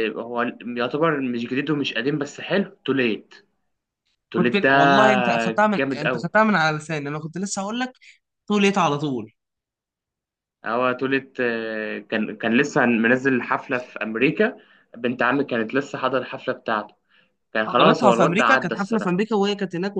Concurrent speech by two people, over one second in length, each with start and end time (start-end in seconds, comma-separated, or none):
17.7-19.2